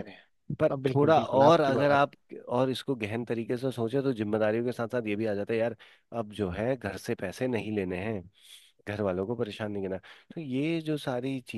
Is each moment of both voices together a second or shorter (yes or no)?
no